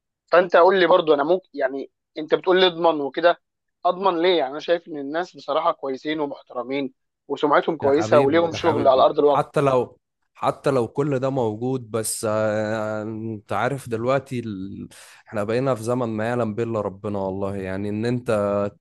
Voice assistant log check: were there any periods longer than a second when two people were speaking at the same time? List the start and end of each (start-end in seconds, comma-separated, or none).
7.8-9.5